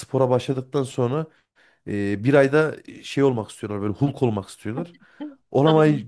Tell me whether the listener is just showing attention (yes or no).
yes